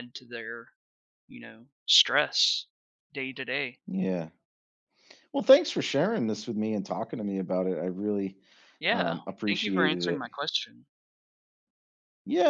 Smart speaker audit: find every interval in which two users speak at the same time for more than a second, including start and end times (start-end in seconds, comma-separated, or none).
8.9-10.2